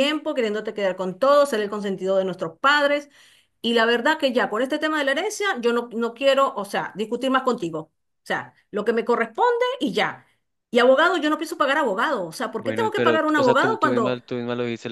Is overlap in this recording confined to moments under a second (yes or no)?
no